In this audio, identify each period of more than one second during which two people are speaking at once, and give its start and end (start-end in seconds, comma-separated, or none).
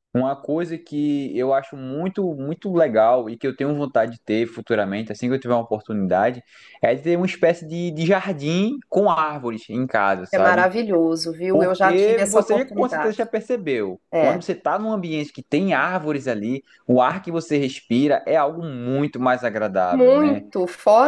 11.5-13.3